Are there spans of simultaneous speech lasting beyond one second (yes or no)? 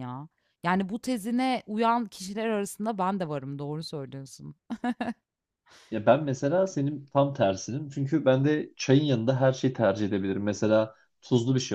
no